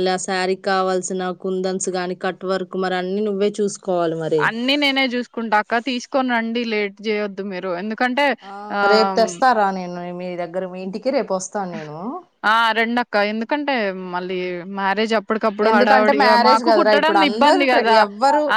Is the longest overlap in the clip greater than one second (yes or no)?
yes